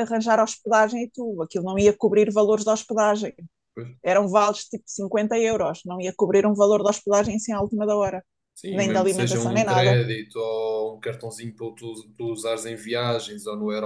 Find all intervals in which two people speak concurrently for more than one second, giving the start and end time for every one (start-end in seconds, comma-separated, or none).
8.7-10.0